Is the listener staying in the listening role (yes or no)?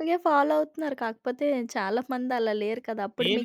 yes